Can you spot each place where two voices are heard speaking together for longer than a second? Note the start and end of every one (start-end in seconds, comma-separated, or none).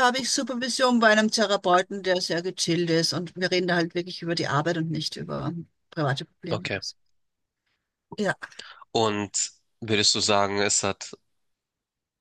none